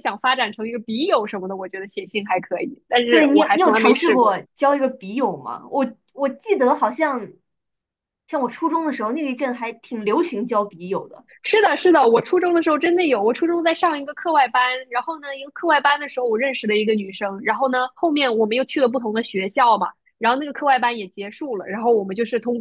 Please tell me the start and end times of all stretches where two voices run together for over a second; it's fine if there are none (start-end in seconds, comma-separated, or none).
3.1-4.4